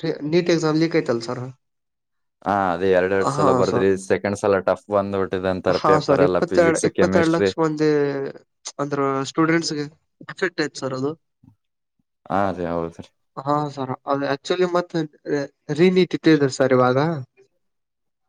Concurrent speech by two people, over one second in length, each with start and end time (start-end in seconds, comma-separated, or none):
5.8-7.5